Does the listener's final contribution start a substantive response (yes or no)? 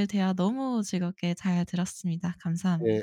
yes